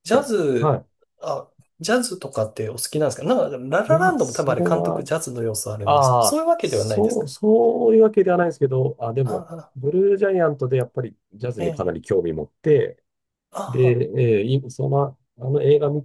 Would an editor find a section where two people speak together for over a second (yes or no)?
yes